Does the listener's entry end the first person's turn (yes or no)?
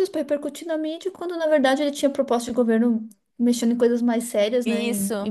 no